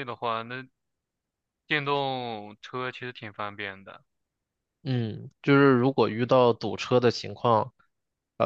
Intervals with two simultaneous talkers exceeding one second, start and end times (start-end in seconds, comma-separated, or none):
none